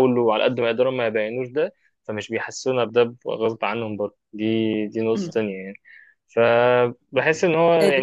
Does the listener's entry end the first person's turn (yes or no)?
yes